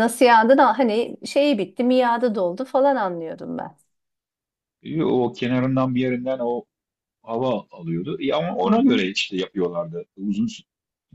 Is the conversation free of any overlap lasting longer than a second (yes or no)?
yes